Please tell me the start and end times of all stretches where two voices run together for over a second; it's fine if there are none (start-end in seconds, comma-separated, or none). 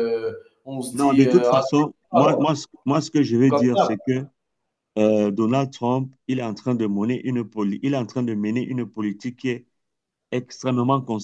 0.9-2.5